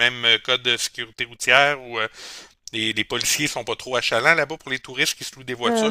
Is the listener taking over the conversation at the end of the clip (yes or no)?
yes